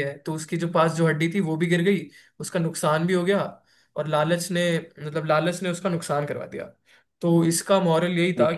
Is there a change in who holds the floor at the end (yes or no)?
no